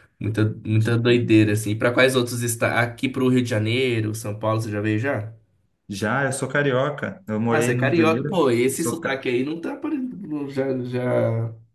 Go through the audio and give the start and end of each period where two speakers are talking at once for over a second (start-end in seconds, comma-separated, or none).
7.5-9.2